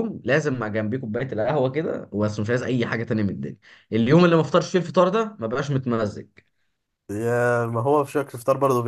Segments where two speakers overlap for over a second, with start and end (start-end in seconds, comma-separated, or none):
none